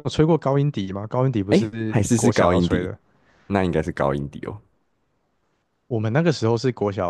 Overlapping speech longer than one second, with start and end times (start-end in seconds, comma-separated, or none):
1.5-2.9